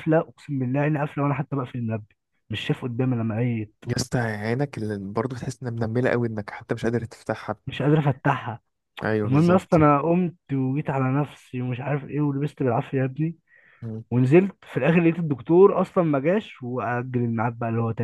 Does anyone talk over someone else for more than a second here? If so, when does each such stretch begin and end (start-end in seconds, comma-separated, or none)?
none